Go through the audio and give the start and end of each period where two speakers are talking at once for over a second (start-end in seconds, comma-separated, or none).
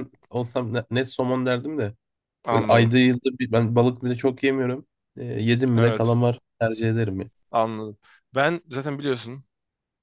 none